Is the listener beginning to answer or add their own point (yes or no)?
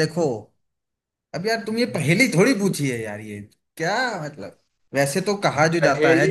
no